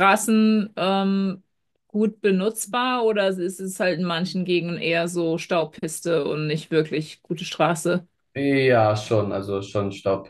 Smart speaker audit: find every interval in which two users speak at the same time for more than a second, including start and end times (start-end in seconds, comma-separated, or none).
none